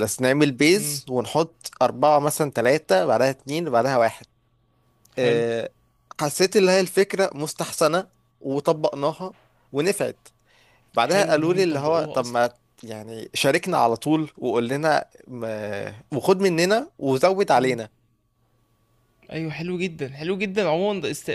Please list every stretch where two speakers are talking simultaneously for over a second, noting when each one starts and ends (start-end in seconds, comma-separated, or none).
11.0-12.4